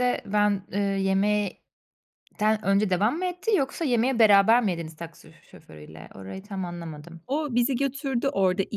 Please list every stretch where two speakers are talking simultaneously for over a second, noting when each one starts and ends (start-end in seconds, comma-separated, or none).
none